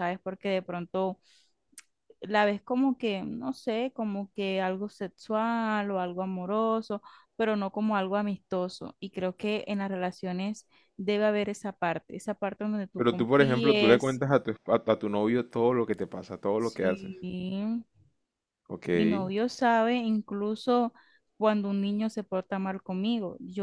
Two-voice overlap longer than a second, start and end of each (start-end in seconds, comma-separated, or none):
13.0-14.2